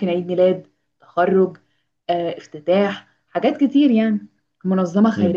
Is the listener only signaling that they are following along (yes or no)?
no